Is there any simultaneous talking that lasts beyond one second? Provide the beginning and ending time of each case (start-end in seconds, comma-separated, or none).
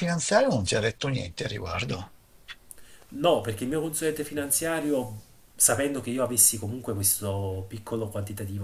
none